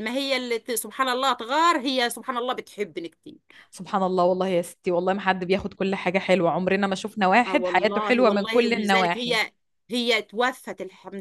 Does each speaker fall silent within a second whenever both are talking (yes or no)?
no